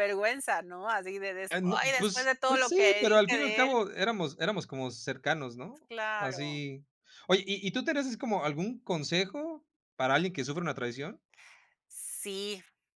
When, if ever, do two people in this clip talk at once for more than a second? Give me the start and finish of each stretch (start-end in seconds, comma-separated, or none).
1.5-3.8